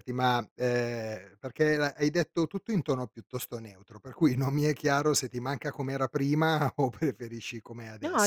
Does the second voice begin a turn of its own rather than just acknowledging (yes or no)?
yes